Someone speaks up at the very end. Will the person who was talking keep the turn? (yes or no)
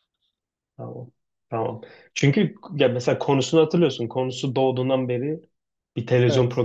yes